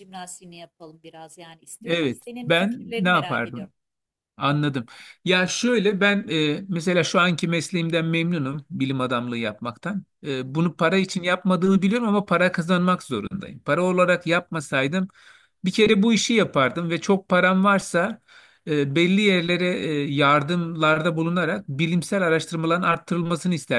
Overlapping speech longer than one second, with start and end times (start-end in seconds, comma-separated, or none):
1.9-3.7